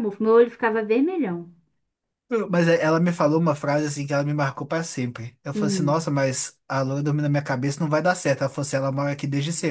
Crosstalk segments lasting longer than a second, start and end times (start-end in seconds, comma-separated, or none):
none